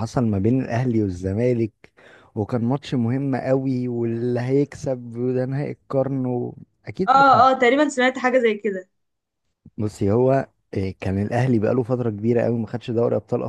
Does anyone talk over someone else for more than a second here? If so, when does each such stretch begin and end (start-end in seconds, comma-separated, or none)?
none